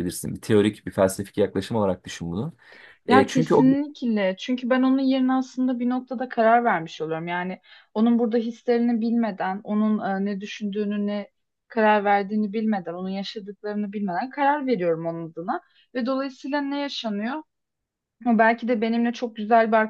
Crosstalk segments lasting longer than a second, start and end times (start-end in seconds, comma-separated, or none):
none